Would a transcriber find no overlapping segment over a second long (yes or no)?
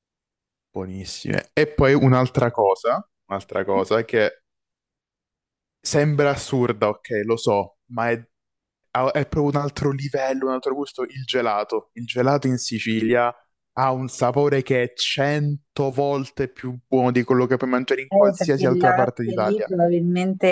no